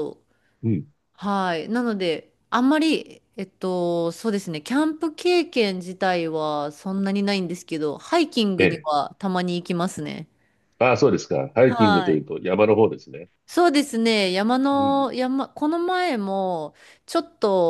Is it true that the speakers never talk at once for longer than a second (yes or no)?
yes